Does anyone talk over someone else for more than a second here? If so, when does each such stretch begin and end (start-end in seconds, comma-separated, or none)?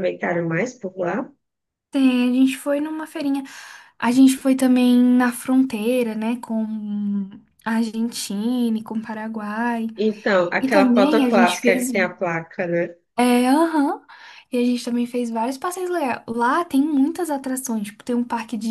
10.6-11.9